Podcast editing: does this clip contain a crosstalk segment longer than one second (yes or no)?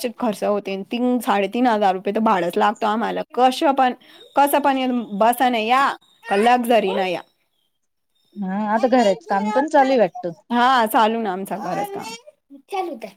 no